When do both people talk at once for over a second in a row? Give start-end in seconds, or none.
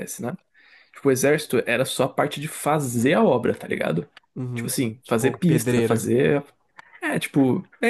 4.5-6.0